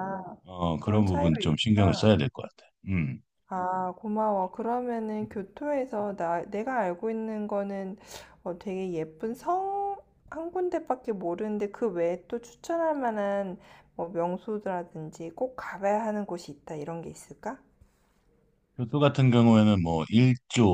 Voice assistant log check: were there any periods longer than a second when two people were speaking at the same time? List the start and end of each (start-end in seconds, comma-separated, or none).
0.8-2.1